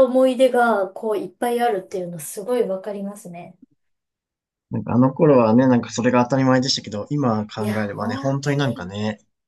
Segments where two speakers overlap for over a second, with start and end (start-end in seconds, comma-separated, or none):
7.6-8.9